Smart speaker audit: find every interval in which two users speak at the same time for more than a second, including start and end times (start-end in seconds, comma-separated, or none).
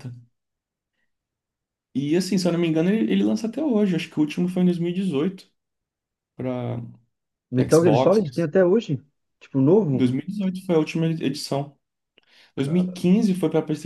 none